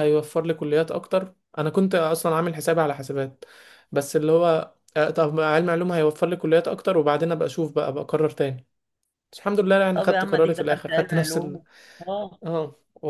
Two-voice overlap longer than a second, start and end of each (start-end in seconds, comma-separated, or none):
9.9-11.6